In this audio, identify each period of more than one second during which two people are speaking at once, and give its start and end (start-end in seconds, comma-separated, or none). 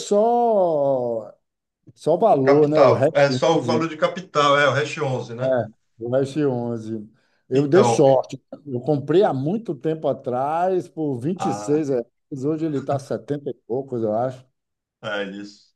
2.4-3.9